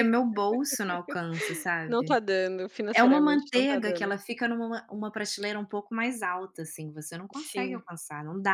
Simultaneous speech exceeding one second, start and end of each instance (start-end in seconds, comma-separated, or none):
2.9-4.2